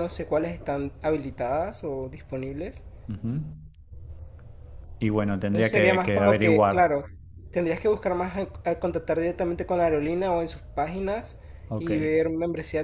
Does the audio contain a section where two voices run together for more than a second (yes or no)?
yes